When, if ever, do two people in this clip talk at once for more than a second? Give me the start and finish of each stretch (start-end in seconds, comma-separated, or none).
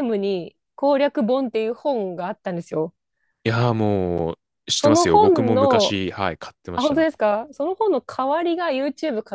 4.7-6.0